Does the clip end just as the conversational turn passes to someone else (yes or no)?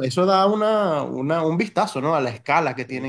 yes